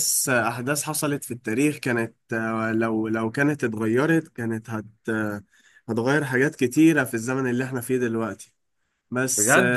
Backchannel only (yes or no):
no